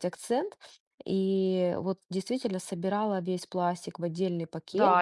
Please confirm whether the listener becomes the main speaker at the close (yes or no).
yes